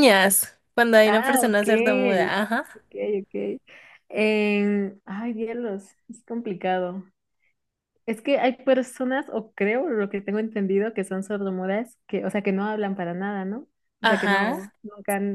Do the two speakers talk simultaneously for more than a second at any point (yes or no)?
yes